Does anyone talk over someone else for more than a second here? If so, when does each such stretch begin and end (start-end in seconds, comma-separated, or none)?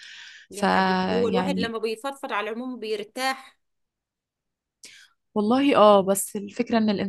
0.5-1.8